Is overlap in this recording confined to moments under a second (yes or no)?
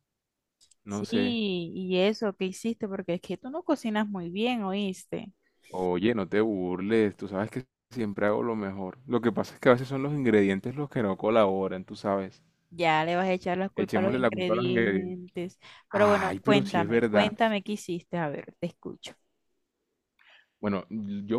no